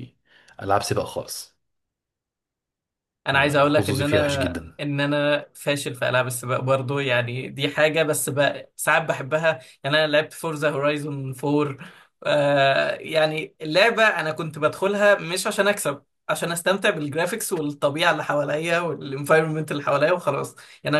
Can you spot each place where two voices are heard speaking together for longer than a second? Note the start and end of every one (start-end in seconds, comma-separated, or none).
3.3-4.8